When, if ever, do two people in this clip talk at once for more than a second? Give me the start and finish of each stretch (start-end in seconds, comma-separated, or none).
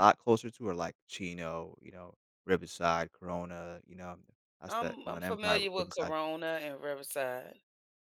4.7-6.1